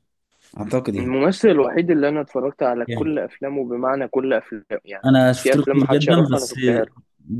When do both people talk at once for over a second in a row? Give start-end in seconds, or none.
5.0-6.5